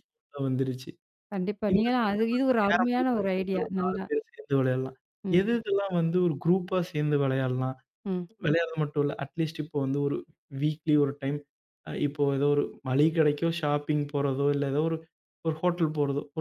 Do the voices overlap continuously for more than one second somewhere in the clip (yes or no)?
yes